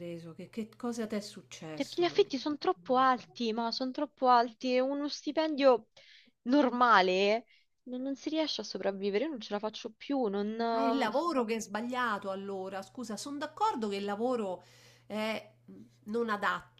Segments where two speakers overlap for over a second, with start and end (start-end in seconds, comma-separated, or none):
1.7-3.2